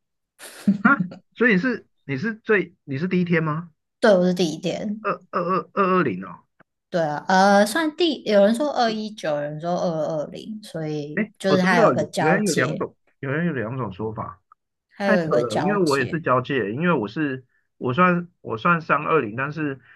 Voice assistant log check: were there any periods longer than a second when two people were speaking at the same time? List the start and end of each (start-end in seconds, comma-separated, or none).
11.2-12.8, 15.0-16.2